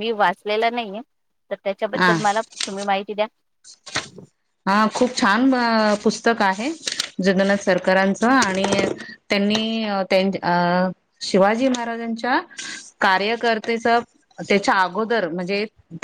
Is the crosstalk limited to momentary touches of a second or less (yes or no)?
yes